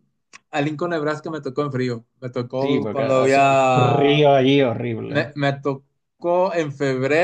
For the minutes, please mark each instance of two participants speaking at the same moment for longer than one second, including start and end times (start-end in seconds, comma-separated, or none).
2.6-4.3